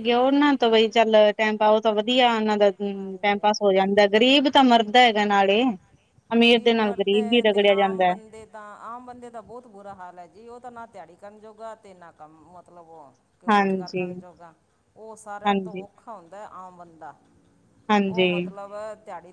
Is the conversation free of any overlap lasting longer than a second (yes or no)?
no